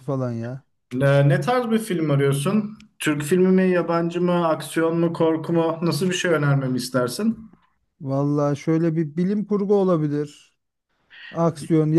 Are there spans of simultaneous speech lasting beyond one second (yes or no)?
no